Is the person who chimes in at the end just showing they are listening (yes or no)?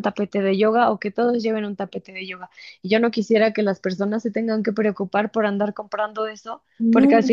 yes